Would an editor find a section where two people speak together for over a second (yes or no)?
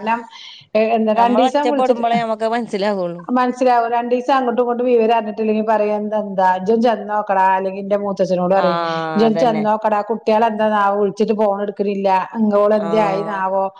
yes